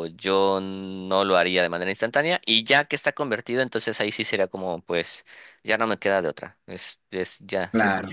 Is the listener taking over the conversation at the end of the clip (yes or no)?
no